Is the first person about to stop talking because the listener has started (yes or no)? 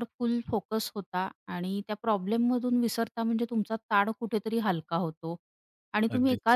no